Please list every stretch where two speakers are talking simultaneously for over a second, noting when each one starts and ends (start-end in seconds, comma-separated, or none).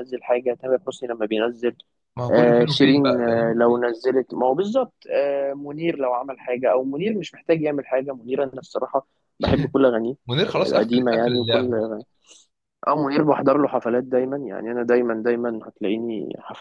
2.3-3.5, 10.5-11.7